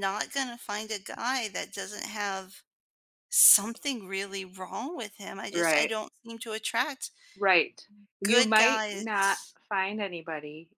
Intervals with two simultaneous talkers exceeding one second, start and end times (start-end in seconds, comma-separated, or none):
8.2-9.6